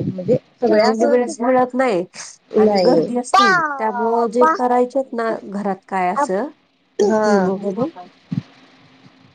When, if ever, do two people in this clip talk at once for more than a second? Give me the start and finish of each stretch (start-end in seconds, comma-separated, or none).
2.6-4.5